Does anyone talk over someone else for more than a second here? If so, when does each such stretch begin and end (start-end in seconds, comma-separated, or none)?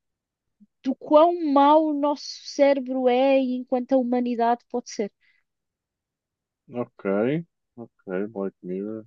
none